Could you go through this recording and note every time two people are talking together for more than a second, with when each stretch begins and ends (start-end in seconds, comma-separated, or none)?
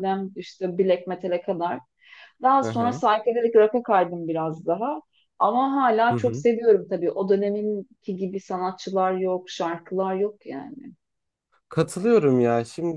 none